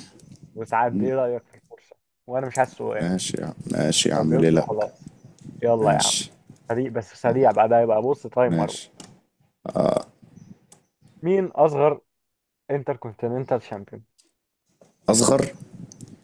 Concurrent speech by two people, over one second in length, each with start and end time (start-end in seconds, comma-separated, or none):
none